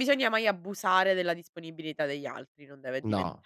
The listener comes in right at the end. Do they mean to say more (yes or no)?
yes